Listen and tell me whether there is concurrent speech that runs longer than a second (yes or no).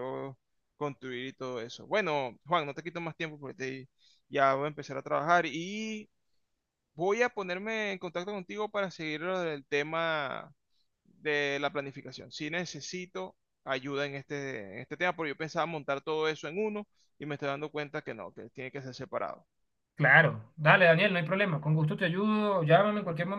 no